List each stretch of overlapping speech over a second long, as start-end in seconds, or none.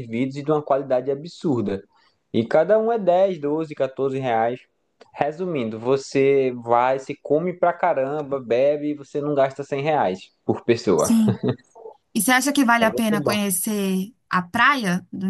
none